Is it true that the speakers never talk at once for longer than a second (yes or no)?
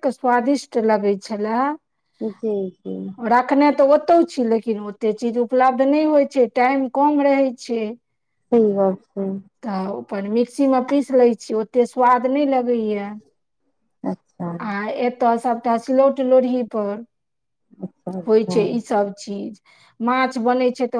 yes